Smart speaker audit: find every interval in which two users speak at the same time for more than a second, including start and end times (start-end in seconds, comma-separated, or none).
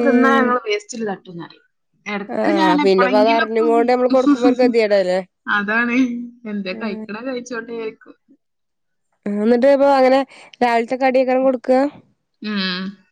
2.4-4.7